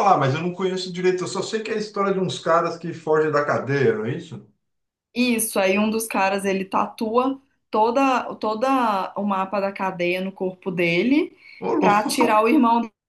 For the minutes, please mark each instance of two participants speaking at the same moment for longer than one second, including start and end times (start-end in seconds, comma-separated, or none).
none